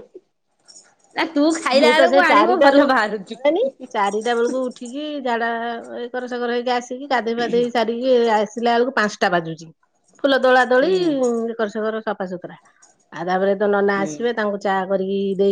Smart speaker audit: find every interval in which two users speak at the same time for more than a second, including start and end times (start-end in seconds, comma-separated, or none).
1.8-3.6